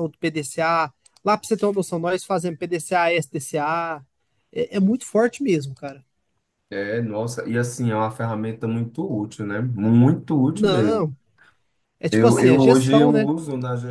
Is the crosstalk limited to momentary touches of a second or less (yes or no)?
no